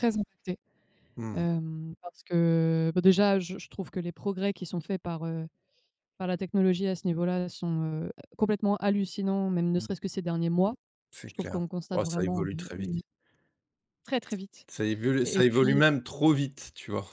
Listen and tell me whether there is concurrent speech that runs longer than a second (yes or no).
yes